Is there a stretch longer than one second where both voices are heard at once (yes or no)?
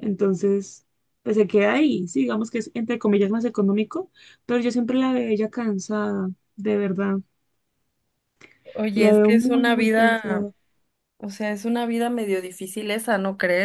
yes